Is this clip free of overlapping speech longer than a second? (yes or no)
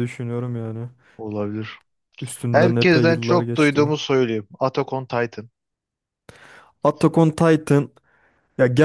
no